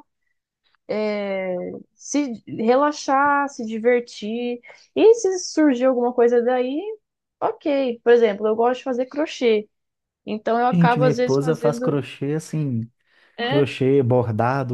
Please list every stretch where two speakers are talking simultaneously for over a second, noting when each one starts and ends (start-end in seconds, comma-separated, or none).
10.7-12.0